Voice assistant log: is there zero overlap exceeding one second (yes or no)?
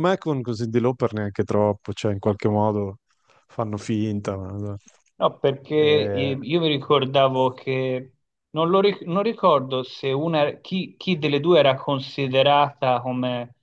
yes